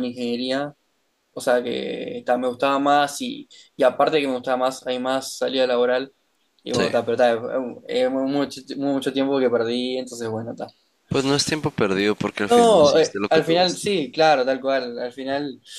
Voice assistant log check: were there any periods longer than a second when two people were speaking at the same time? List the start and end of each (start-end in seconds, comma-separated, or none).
12.5-13.9